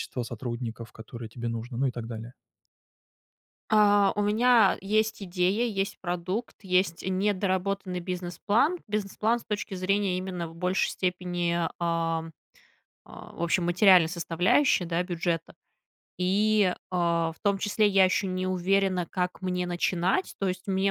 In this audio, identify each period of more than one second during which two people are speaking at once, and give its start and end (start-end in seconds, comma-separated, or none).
none